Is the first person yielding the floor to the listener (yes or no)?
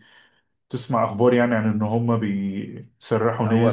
yes